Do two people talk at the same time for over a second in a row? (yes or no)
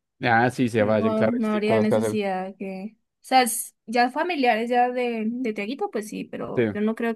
yes